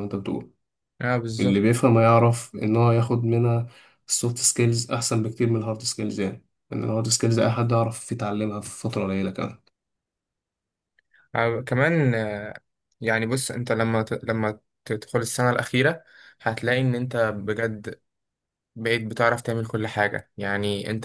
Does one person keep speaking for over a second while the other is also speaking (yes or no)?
no